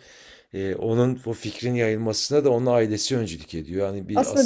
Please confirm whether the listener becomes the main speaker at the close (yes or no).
yes